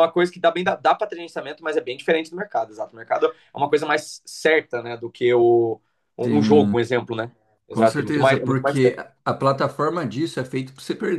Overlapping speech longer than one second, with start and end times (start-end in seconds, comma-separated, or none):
7.7-8.9